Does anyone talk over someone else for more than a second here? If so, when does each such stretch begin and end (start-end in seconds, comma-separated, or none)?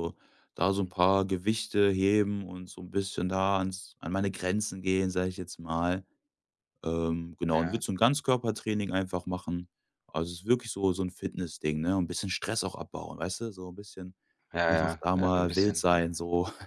14.7-16.1